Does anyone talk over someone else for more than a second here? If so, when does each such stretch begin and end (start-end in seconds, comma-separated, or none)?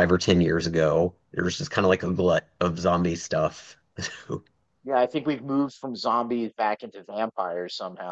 none